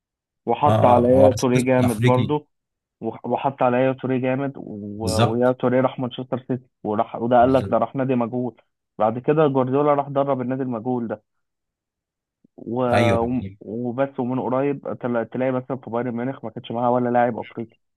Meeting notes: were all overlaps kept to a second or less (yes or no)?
no